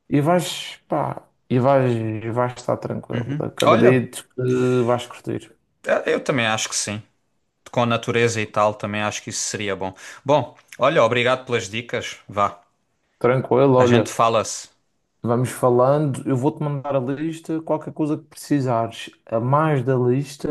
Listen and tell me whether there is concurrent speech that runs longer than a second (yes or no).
no